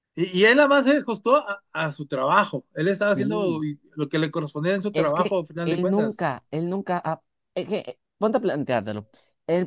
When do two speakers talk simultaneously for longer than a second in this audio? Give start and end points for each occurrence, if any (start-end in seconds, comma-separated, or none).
4.9-6.2